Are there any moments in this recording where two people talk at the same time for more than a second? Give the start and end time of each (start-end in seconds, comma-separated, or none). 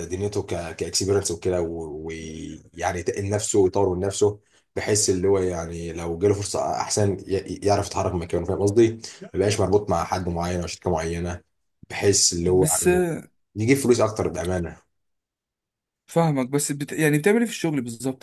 none